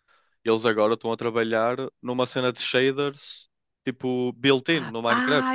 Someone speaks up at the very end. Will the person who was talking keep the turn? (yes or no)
no